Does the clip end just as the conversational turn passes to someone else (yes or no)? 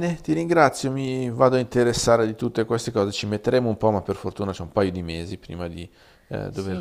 yes